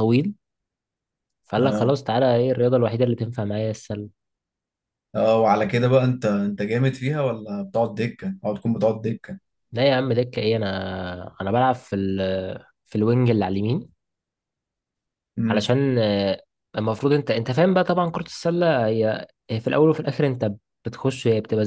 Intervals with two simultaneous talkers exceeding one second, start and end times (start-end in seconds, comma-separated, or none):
none